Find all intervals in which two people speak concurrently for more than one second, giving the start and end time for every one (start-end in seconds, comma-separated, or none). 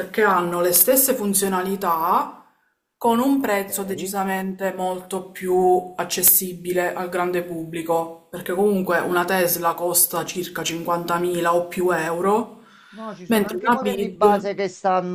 13.3-14.5